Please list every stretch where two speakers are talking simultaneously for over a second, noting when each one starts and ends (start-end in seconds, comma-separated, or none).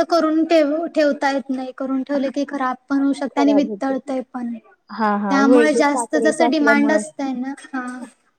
5.0-7.0